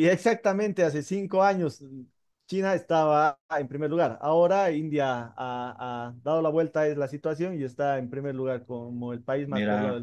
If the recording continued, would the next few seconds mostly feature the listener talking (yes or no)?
yes